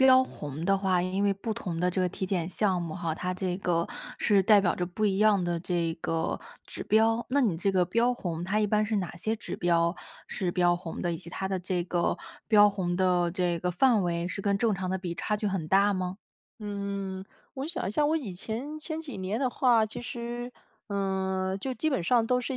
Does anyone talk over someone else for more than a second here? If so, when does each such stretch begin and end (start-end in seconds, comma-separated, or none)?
none